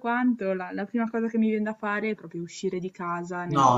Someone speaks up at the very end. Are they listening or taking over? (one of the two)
taking over